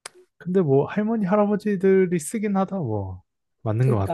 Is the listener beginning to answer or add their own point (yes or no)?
yes